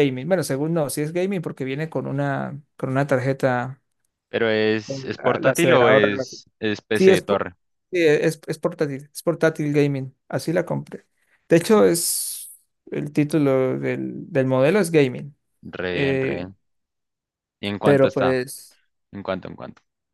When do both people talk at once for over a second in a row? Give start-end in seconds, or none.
4.8-6.1